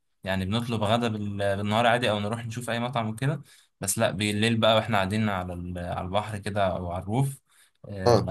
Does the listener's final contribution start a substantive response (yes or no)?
no